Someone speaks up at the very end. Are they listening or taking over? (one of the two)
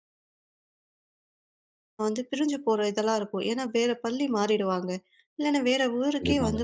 listening